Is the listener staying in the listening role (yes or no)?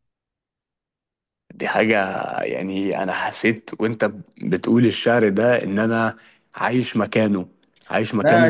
no